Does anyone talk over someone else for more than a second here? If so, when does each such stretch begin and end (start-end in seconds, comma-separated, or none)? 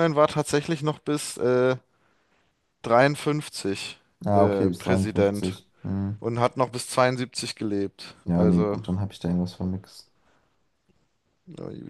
4.3-5.6